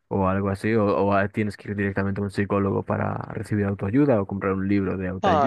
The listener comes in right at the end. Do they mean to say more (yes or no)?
yes